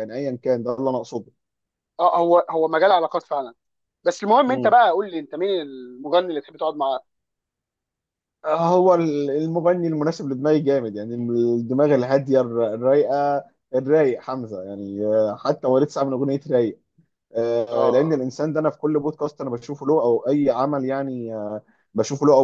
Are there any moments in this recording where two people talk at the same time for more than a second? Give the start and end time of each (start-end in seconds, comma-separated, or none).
none